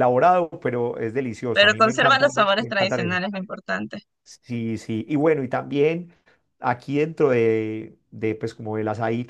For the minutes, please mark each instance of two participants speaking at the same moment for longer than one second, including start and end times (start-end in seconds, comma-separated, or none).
1.5-3.2